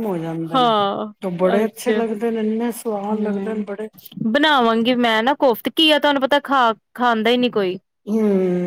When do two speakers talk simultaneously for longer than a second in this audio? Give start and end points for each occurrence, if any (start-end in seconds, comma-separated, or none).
none